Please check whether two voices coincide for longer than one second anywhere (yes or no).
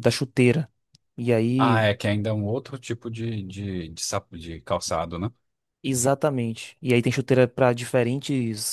no